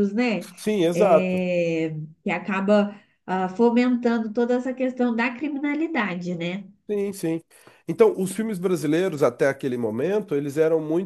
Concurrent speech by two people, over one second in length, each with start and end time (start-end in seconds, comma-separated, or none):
none